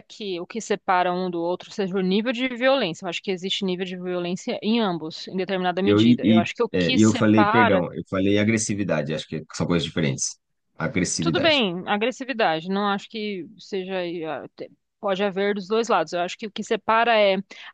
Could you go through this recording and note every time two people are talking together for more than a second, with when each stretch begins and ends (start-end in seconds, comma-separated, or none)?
5.8-7.8